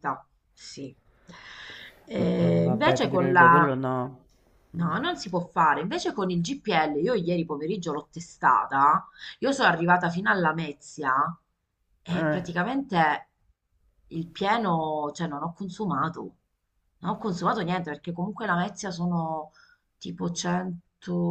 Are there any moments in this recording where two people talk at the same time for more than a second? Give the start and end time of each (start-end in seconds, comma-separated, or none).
2.2-3.7